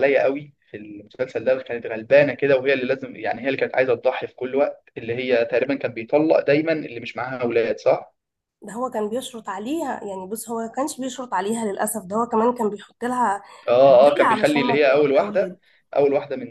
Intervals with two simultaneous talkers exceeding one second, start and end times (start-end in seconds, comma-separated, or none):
13.9-15.6